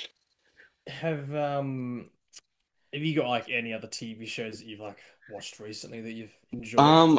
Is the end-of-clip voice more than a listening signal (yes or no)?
yes